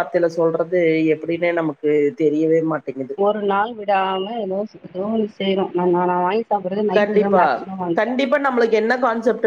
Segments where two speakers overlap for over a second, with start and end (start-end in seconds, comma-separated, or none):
none